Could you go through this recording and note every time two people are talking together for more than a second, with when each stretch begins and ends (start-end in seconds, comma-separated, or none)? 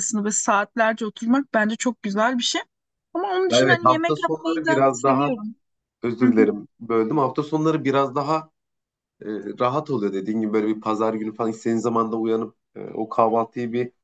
3.5-5.4